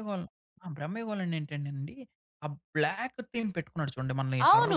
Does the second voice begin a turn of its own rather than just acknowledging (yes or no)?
yes